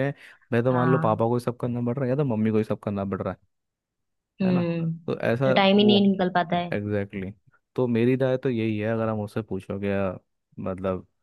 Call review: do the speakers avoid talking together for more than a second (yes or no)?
yes